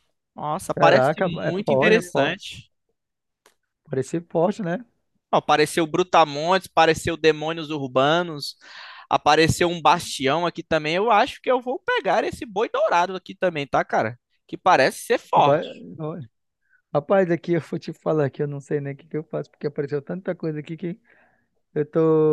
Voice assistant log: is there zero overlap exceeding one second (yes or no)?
no